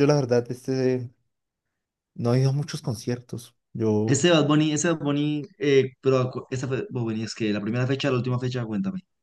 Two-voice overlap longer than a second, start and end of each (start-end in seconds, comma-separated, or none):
none